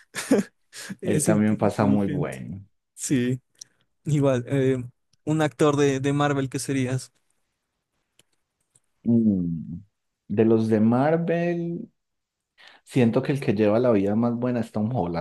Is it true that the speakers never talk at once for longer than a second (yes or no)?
no